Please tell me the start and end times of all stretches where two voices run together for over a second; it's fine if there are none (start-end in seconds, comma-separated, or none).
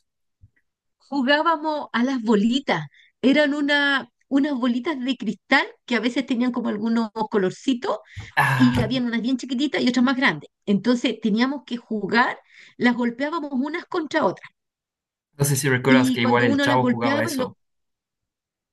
15.9-17.5